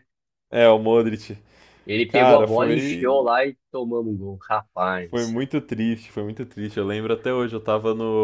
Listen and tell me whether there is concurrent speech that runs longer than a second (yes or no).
yes